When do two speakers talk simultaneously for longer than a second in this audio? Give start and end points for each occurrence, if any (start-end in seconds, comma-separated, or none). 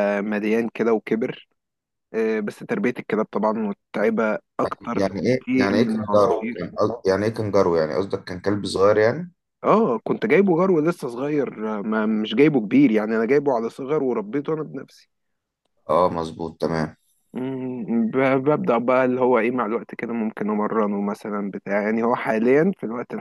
4.9-6.7